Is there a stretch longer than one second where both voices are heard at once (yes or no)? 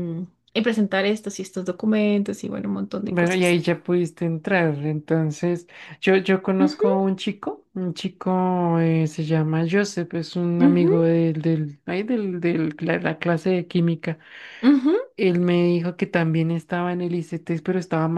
no